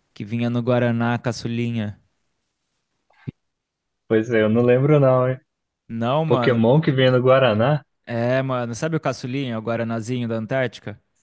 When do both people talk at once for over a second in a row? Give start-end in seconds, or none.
none